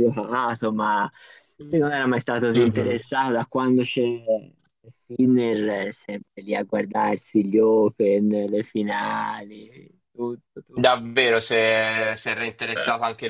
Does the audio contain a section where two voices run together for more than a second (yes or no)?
no